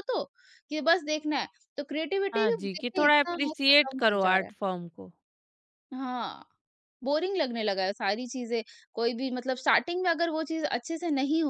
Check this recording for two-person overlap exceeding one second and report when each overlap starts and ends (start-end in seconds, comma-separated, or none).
2.3-4.6